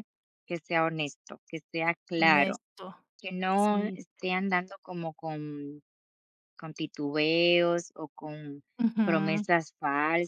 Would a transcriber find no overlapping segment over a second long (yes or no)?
yes